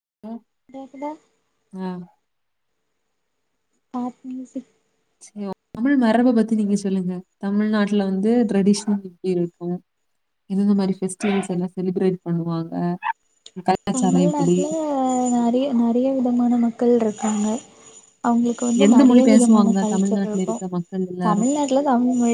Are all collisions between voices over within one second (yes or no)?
no